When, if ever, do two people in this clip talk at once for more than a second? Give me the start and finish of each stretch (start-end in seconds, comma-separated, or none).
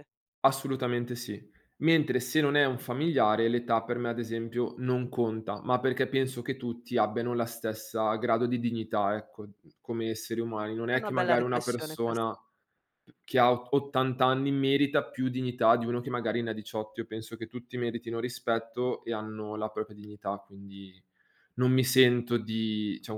10.9-12.3